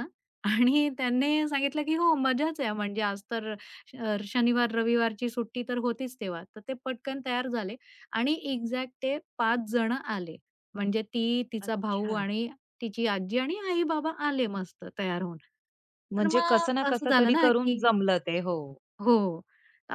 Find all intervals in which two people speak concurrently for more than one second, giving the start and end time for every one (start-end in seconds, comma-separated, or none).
16.1-17.8